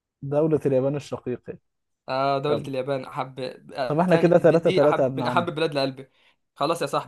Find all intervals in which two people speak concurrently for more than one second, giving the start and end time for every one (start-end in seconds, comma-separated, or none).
3.9-5.5